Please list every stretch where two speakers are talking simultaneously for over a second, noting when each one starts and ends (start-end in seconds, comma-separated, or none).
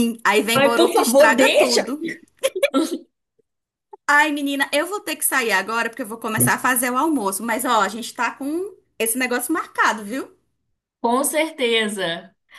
0.5-1.8